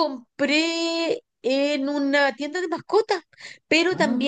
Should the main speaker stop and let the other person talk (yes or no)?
no